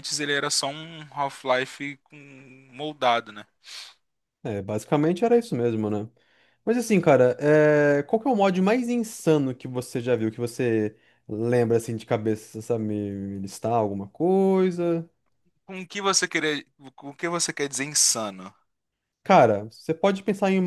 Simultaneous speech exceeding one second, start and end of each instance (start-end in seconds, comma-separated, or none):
none